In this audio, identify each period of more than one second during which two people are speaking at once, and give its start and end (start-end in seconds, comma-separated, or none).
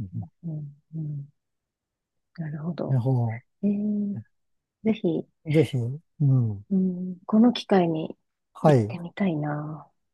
none